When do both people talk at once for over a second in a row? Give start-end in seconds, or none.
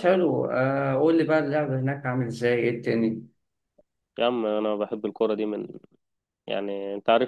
none